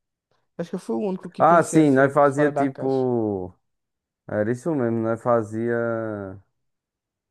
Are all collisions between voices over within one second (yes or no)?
no